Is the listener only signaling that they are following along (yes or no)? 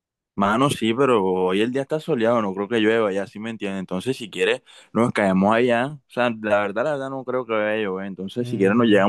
yes